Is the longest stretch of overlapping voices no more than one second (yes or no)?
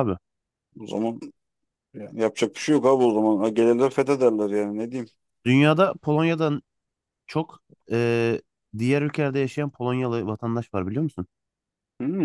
yes